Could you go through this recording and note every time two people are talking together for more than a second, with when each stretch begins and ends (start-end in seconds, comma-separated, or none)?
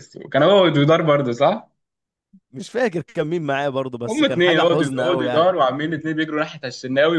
4.1-5.5